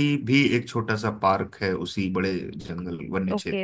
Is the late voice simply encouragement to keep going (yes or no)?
no